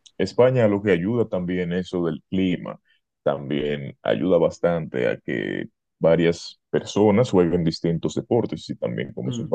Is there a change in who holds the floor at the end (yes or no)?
no